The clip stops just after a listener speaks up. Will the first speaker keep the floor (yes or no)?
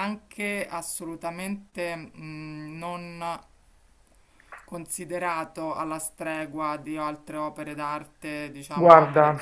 no